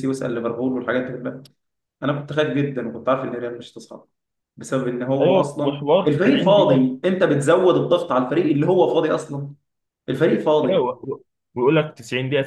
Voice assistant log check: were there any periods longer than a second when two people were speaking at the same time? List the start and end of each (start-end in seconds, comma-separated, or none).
5.2-6.9